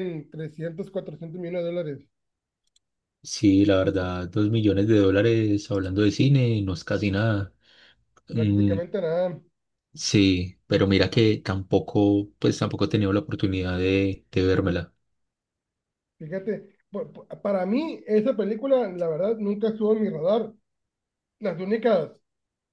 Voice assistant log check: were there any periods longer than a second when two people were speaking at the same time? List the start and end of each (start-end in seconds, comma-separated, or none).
none